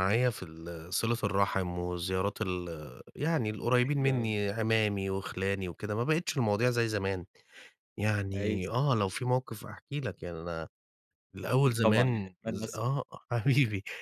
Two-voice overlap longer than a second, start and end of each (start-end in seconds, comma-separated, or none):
11.6-13.0